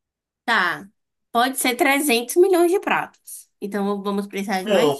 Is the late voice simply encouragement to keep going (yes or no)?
no